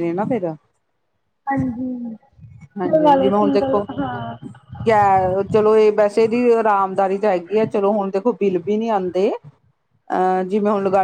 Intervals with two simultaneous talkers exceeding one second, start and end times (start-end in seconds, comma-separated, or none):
2.6-3.9